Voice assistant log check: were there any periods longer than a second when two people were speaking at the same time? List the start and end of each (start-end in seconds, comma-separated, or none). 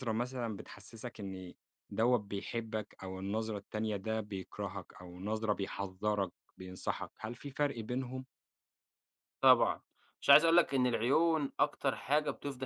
none